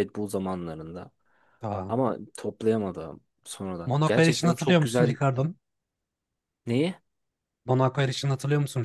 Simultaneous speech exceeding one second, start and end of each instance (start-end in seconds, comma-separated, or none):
3.9-5.2